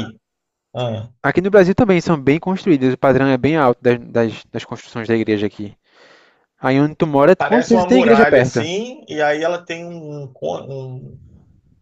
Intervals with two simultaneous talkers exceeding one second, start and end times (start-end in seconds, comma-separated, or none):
7.4-8.7